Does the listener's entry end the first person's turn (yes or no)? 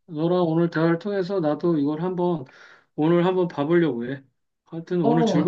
yes